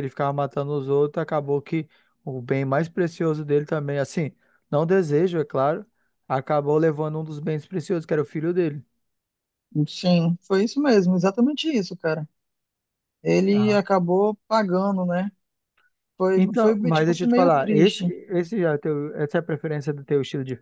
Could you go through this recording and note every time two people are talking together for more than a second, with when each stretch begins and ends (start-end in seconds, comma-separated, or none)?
16.4-18.1